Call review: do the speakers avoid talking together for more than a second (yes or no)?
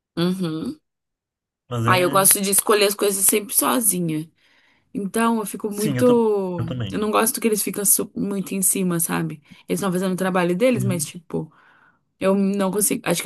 yes